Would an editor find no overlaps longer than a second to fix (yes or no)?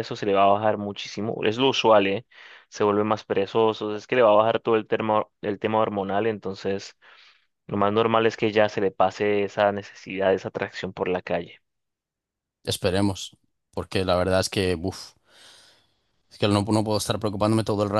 yes